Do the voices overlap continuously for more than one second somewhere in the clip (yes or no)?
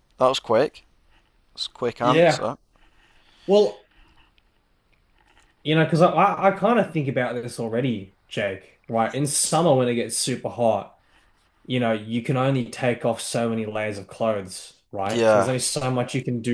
no